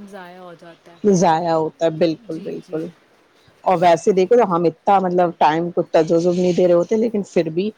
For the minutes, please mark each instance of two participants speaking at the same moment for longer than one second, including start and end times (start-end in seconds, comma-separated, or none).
none